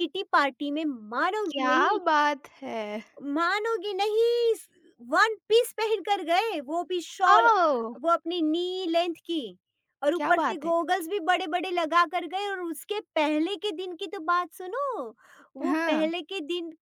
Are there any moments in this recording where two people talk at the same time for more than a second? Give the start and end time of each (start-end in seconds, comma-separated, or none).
none